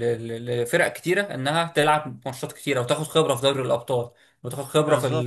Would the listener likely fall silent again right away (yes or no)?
yes